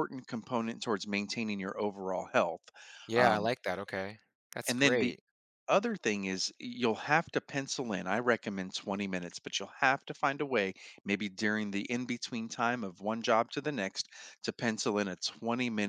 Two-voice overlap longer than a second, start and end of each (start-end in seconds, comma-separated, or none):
none